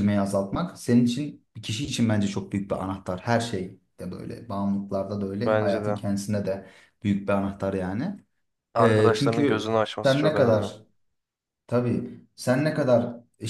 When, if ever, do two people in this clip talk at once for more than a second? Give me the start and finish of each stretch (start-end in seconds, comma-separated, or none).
8.8-10.7